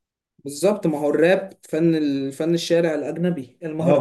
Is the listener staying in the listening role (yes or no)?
no